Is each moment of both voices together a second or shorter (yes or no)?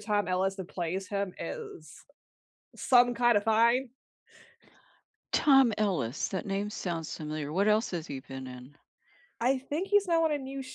yes